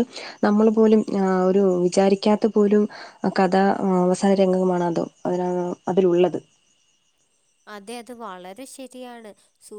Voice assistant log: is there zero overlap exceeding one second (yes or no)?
yes